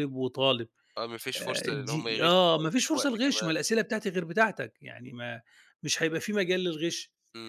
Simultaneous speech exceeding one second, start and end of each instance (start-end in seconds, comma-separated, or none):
1.4-3.6